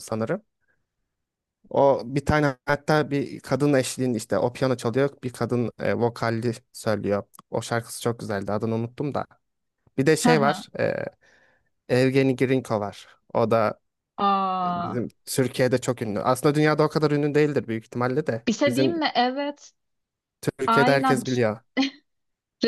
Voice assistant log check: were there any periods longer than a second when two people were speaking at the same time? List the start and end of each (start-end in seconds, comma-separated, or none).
none